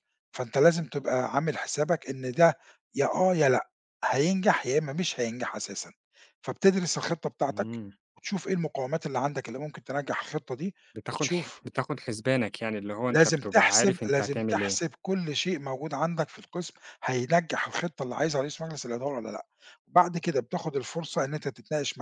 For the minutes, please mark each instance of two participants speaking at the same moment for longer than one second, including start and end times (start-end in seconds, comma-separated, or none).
13.1-14.8